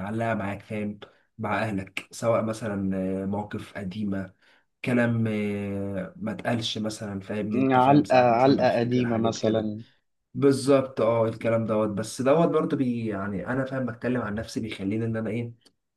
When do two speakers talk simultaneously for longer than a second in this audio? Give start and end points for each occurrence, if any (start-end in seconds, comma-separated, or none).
7.7-9.7